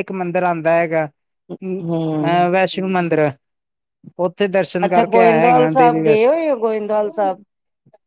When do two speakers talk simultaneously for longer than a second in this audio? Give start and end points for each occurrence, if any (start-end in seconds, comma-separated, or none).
4.8-6.3